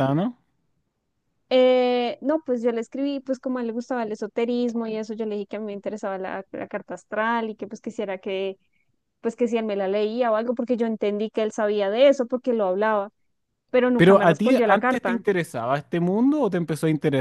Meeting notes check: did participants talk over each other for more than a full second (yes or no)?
yes